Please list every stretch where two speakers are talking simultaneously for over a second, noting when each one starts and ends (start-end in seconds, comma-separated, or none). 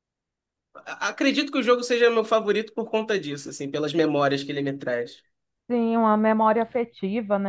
none